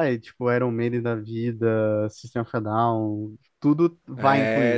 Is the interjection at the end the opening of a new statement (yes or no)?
yes